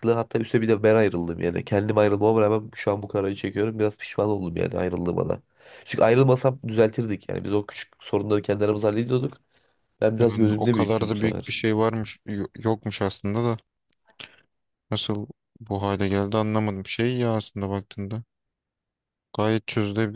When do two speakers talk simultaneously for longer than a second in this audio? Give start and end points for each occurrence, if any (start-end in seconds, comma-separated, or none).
10.2-11.6